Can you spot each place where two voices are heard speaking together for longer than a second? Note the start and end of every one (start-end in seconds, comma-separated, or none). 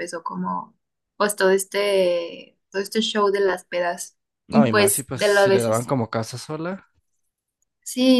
4.5-5.9